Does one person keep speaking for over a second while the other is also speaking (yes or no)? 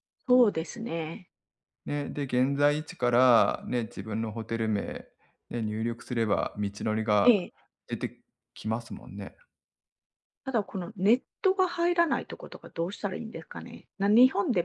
no